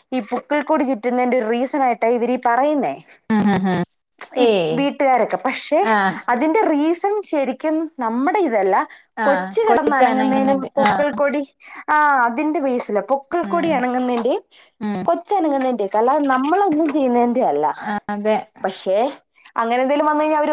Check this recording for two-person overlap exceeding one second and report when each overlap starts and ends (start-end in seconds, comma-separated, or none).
9.7-10.9